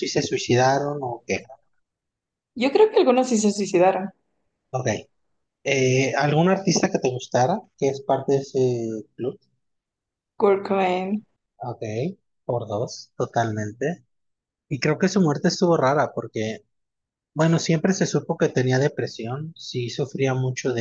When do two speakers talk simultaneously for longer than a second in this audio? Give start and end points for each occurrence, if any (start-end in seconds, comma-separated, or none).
none